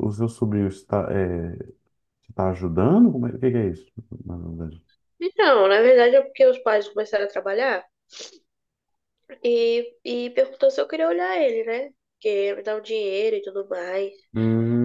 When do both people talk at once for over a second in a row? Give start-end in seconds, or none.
none